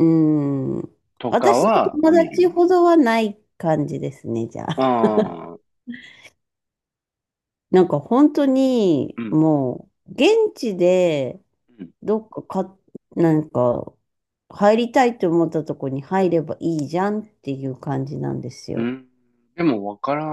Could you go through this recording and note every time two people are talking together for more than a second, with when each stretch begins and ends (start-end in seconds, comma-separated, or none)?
1.3-2.5